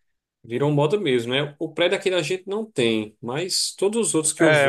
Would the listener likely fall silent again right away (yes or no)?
no